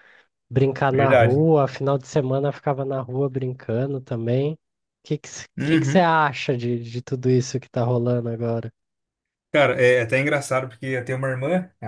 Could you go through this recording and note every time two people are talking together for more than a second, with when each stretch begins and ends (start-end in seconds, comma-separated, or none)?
none